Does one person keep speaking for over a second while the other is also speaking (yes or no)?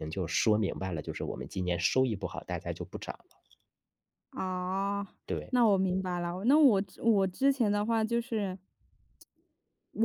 no